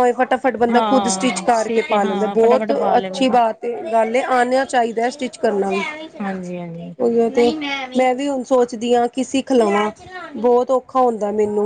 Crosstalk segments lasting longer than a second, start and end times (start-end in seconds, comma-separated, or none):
0.7-3.4